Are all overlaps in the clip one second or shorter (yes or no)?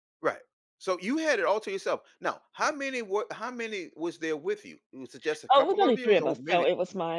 no